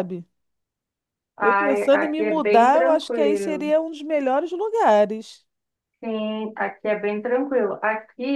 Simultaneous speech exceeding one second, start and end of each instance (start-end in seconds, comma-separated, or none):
1.4-3.7